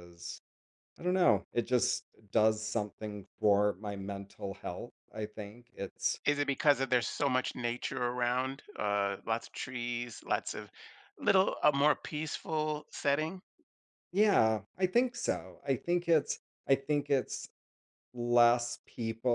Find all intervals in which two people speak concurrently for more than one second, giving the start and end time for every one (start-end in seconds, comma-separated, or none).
none